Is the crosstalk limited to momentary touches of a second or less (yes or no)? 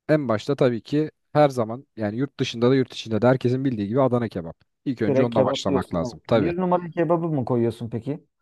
no